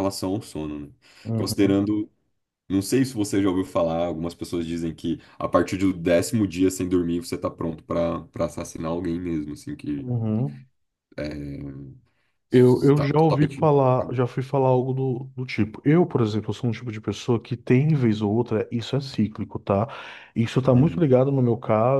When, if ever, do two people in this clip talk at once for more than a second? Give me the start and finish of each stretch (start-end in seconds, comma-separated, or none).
12.5-14.2